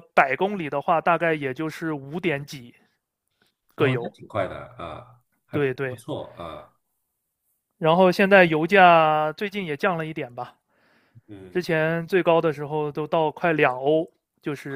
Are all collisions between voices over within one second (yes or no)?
yes